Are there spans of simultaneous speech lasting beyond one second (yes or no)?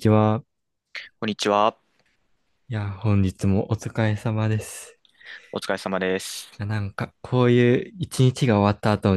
no